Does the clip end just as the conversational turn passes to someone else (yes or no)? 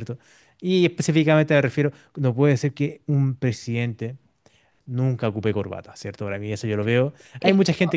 no